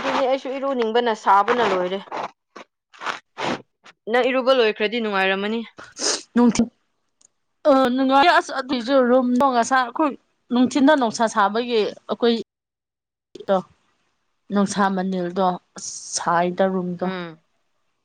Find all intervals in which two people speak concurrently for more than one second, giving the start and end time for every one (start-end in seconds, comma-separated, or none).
none